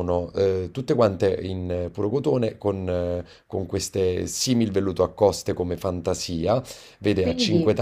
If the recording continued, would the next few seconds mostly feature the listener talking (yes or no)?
no